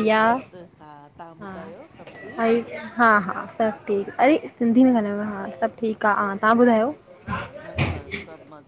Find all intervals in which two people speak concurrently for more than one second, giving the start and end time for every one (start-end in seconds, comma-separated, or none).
none